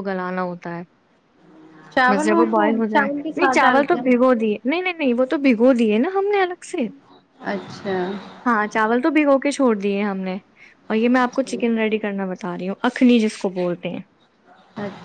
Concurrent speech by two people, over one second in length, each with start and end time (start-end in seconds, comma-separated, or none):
2.1-4.4